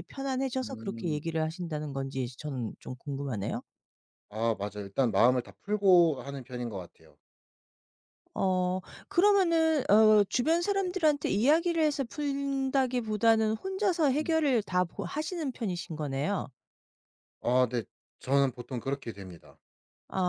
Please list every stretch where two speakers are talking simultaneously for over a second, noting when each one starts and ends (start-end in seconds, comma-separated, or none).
none